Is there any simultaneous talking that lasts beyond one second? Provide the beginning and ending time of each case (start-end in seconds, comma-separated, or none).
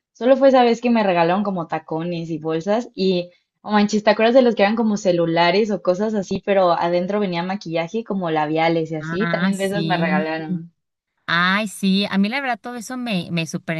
9.0-10.3